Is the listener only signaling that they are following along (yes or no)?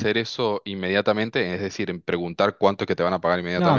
no